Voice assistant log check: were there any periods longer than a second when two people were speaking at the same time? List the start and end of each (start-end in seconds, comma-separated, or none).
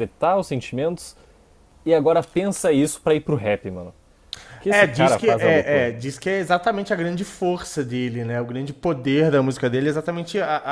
4.7-5.9